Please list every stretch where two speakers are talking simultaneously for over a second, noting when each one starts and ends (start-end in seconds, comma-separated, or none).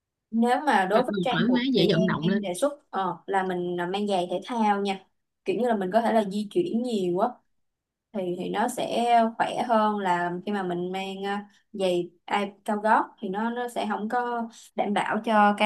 0.9-2.4